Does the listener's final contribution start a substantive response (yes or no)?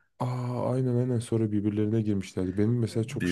no